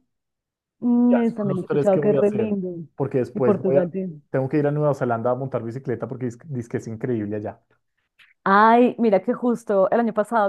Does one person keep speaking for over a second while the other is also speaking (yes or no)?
yes